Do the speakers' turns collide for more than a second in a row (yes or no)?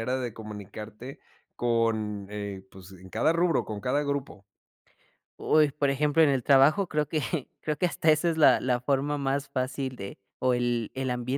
no